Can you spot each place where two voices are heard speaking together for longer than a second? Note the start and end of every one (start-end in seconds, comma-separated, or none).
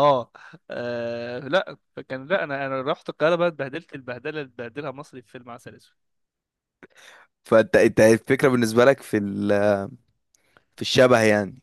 none